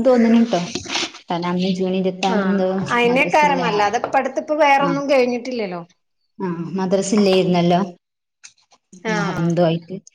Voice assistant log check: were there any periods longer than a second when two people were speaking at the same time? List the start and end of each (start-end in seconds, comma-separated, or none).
none